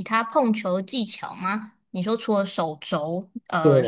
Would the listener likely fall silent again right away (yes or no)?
yes